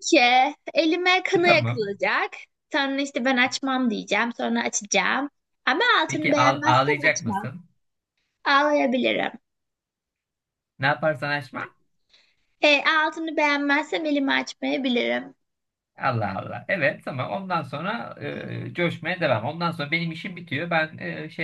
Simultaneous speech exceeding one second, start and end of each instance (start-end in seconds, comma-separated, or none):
6.1-7.5